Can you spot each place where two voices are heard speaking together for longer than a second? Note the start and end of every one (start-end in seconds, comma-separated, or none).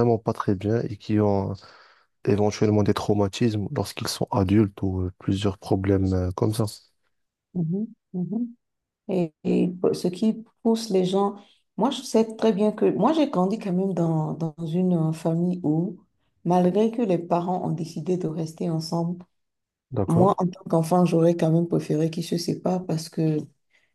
none